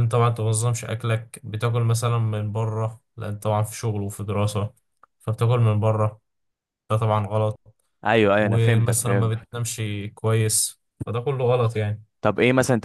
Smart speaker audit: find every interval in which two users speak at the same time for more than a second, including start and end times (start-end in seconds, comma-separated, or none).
8.4-9.6